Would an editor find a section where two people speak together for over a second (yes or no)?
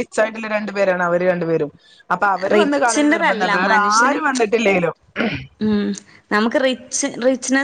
yes